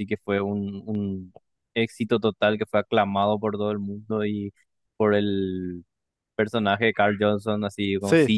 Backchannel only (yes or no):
yes